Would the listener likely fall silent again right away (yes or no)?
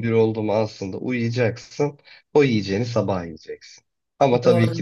yes